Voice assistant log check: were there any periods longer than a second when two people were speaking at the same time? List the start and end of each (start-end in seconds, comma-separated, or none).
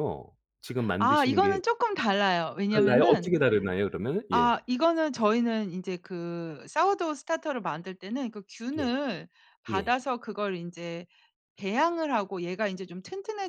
none